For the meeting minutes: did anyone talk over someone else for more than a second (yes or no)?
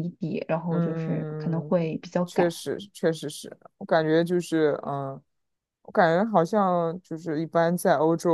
yes